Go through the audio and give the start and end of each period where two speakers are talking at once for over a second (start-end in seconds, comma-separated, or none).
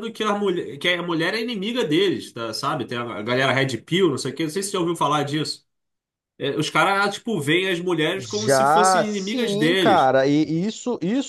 8.2-10.1